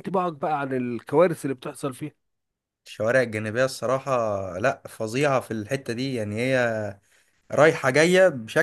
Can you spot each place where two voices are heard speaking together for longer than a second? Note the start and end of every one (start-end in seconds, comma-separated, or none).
none